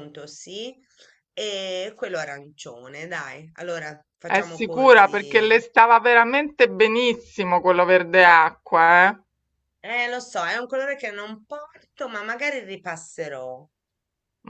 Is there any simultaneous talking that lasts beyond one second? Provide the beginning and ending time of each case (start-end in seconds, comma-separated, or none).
4.2-5.5